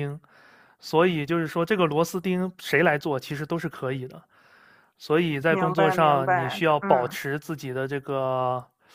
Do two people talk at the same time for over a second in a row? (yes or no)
yes